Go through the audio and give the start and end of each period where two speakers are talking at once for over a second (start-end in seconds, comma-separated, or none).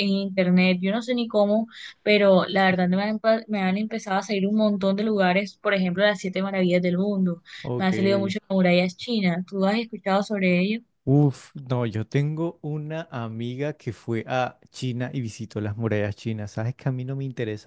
none